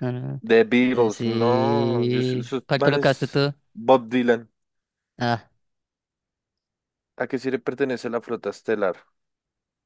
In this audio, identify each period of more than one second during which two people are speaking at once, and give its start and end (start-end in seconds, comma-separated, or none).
0.9-3.5